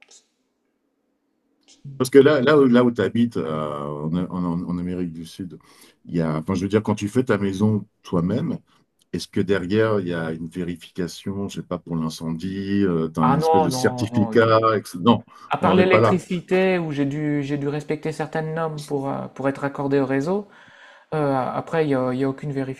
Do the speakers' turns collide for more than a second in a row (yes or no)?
yes